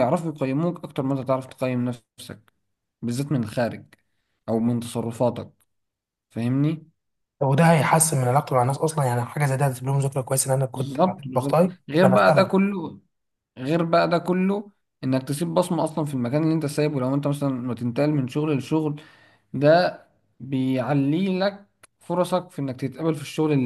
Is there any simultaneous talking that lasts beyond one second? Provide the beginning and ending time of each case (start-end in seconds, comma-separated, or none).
10.7-12.5